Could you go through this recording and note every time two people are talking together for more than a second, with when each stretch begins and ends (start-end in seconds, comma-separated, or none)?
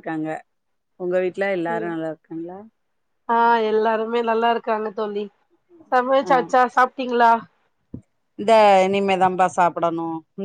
none